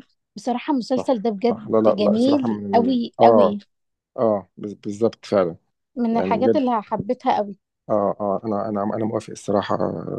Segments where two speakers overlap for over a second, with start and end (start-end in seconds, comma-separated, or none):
0.9-3.6